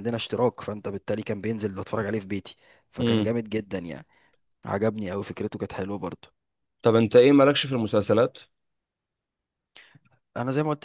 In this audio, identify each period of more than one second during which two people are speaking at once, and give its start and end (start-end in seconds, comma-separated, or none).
none